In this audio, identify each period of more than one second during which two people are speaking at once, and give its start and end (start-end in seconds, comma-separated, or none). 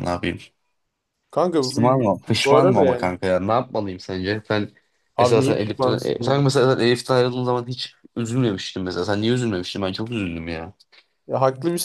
1.6-3.1, 5.2-6.4